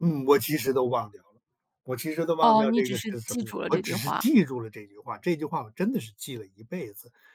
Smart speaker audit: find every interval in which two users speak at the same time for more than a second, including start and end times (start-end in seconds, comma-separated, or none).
2.4-4.3